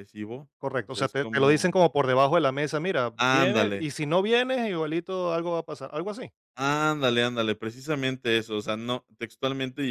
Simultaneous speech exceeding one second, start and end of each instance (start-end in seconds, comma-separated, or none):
0.6-1.9